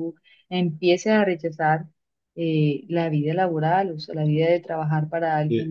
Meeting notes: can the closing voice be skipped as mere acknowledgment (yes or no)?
no